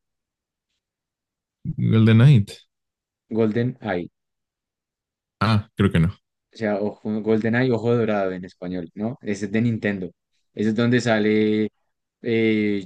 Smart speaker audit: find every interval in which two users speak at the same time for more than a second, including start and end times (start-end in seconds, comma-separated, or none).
none